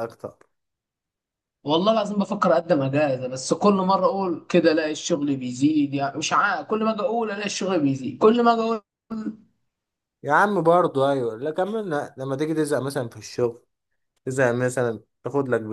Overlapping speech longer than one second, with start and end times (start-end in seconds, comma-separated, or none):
none